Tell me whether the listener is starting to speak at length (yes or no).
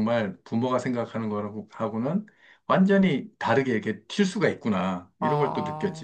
yes